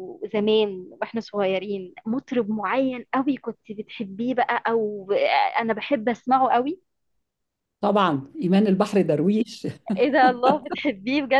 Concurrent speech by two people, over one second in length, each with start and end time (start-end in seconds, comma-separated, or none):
none